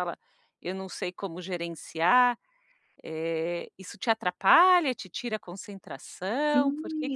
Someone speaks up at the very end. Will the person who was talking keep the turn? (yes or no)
no